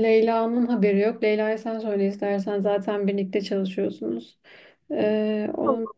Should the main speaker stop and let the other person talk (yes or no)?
no